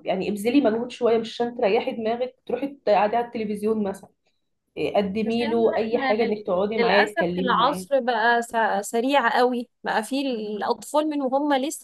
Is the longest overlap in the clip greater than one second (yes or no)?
yes